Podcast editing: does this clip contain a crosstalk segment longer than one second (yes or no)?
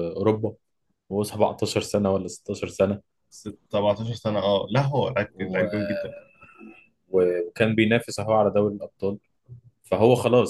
no